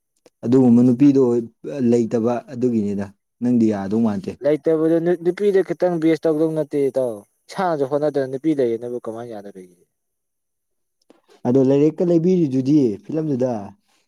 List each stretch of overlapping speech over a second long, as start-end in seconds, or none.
none